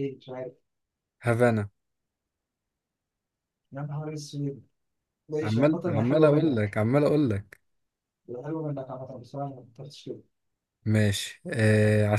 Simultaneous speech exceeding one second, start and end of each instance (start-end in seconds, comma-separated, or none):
5.4-6.8